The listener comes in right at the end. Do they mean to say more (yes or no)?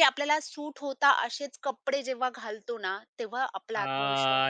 yes